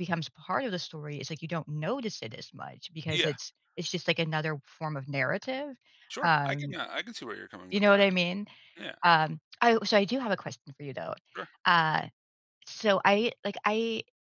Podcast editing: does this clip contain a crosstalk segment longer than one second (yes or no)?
no